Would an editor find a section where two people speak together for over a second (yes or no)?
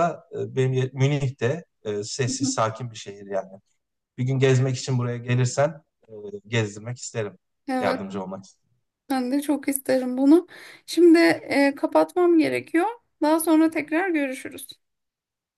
no